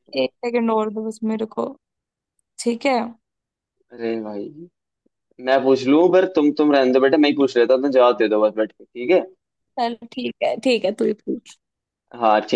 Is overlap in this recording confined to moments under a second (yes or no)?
yes